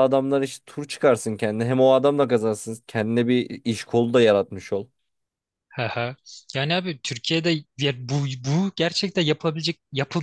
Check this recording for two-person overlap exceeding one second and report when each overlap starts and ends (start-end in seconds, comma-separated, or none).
none